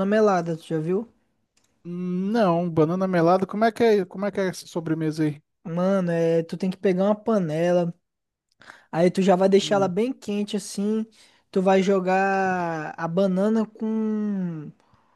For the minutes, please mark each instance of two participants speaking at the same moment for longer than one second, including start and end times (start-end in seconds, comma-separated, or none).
none